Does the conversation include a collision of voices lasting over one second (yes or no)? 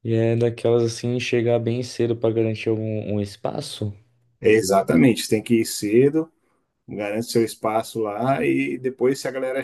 no